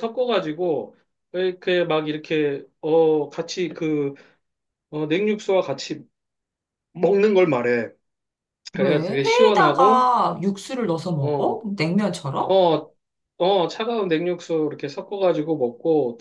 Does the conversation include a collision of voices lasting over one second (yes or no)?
yes